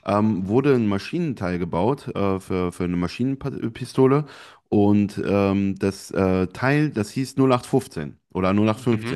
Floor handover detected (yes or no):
no